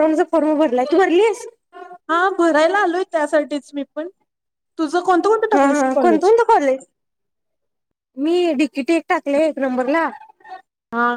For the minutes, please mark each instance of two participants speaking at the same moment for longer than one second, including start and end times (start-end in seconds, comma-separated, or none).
4.9-6.3